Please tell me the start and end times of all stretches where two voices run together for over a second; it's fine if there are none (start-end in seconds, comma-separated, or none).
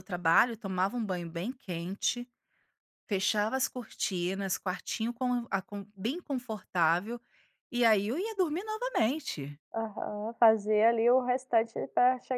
none